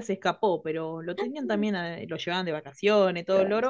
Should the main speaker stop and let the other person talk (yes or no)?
no